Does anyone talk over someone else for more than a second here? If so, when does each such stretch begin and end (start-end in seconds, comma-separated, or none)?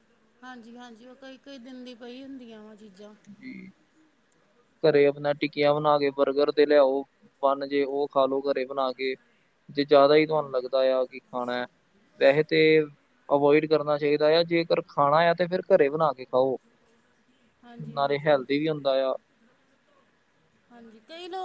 none